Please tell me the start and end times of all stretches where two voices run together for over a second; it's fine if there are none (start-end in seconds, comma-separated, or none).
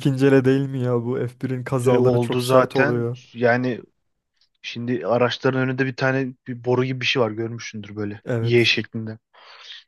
1.9-3.2